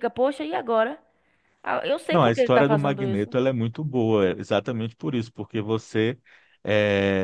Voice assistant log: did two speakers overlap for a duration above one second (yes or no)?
yes